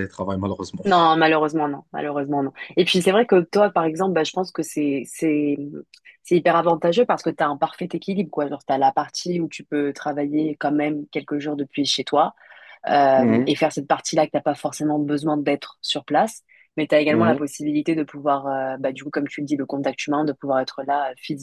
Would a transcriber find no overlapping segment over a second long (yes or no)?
yes